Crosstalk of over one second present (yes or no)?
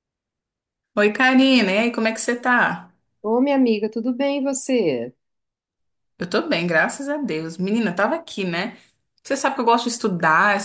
no